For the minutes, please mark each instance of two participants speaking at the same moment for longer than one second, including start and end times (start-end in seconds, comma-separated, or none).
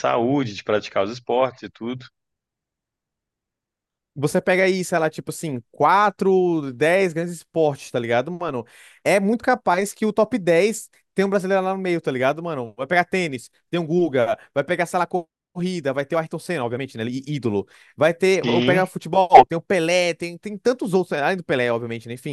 none